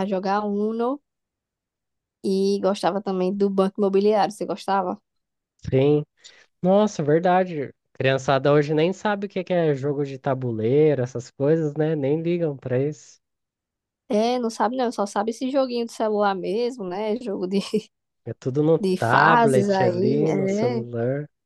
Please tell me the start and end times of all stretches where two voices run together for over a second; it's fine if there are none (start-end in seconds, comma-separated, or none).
18.8-20.8